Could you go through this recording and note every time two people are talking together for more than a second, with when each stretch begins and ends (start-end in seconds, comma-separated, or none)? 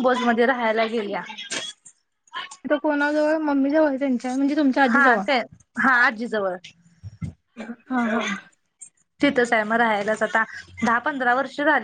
none